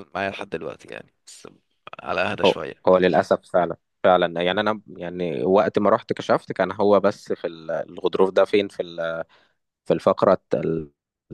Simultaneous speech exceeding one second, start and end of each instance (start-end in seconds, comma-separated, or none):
none